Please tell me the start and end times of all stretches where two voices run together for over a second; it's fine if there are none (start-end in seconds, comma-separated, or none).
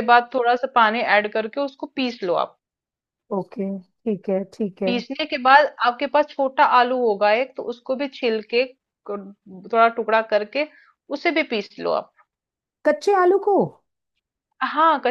none